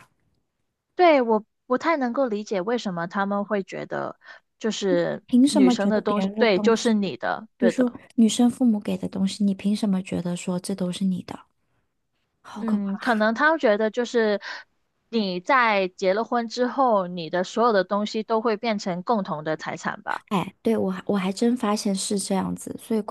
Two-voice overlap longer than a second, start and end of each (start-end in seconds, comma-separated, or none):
5.2-8.0